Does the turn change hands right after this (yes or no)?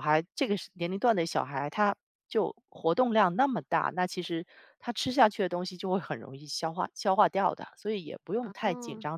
no